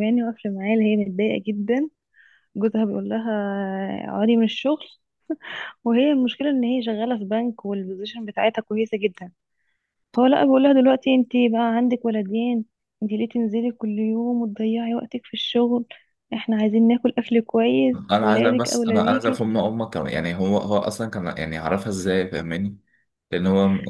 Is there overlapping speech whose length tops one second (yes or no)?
yes